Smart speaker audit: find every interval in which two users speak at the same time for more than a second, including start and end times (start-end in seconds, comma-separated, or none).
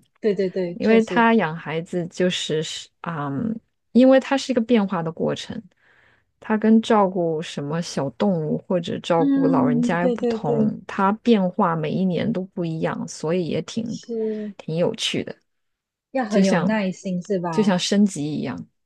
9.2-10.7